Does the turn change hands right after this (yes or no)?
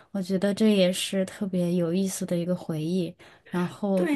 yes